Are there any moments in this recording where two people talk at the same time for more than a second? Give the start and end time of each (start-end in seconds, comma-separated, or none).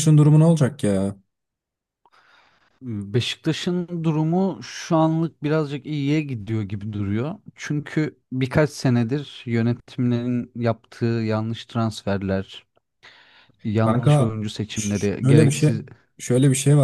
13.8-15.7